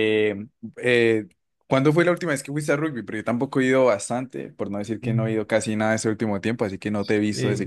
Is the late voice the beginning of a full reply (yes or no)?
yes